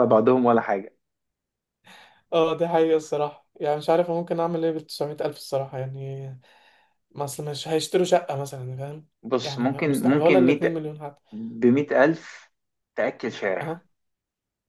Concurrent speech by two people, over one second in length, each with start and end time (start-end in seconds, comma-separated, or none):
9.4-10.9